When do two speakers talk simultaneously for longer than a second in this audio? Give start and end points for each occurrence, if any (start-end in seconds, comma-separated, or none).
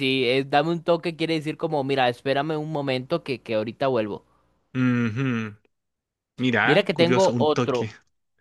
6.6-7.9